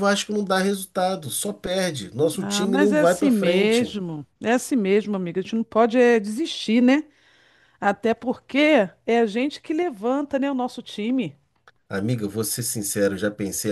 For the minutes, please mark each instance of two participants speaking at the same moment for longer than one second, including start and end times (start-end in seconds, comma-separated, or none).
2.4-3.9